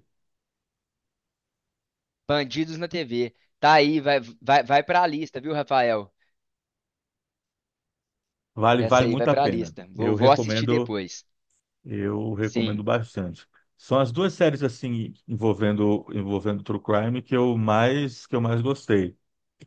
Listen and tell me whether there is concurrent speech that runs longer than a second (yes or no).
yes